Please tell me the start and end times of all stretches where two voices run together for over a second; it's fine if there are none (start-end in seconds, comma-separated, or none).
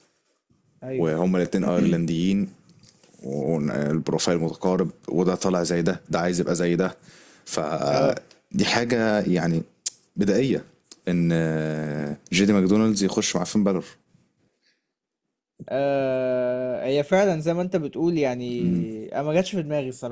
none